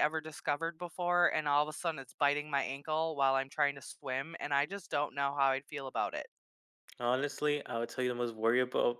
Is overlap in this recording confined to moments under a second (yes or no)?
yes